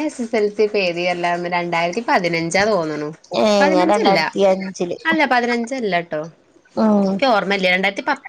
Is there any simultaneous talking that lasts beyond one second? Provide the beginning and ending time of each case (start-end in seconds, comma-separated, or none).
none